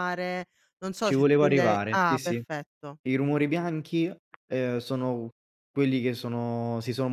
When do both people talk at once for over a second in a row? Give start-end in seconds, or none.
1.0-2.4